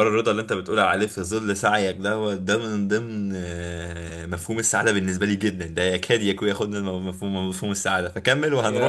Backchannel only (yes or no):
no